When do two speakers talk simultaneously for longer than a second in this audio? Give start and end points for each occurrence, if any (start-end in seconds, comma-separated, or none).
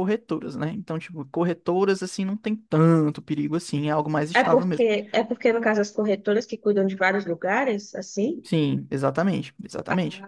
none